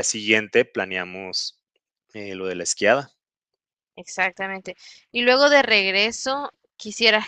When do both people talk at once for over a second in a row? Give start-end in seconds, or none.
none